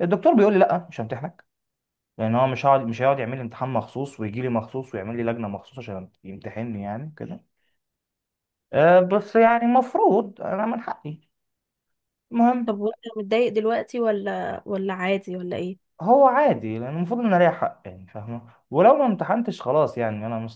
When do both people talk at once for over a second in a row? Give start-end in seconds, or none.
none